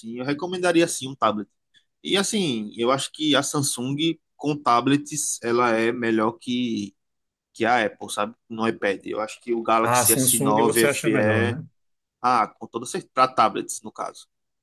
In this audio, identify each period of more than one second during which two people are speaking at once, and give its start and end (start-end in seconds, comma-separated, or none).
9.8-11.6